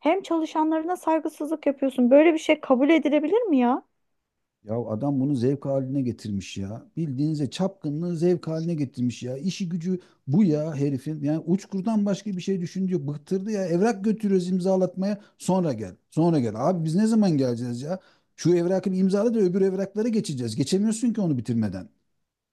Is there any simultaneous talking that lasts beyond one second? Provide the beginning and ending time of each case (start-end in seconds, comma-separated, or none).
none